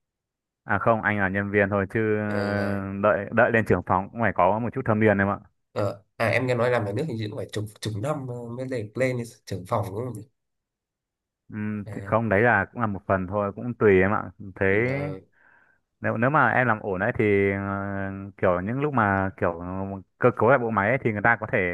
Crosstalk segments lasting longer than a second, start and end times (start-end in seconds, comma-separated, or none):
none